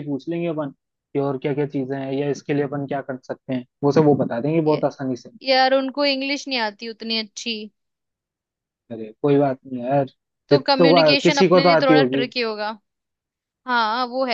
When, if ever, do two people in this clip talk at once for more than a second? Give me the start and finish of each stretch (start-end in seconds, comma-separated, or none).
10.5-12.2